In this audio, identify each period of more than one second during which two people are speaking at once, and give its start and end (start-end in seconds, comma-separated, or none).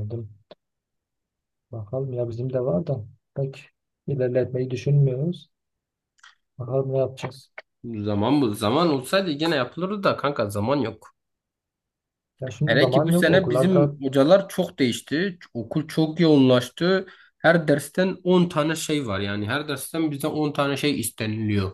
12.7-13.9